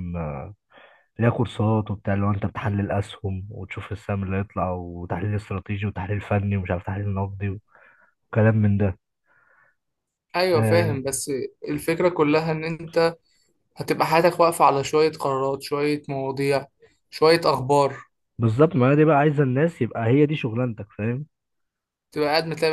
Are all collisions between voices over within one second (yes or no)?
yes